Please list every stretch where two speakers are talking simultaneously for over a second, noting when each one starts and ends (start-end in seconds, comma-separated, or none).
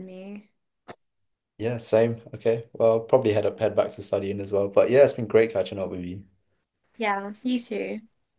none